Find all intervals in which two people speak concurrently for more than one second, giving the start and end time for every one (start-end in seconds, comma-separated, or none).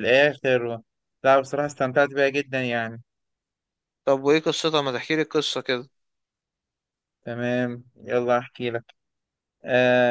none